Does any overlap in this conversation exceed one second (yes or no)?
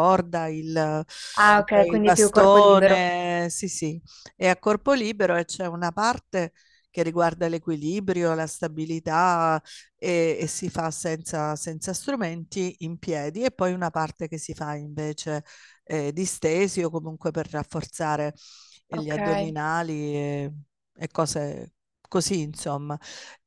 yes